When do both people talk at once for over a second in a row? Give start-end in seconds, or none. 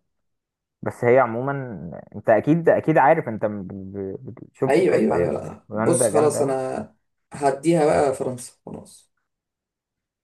4.7-6.5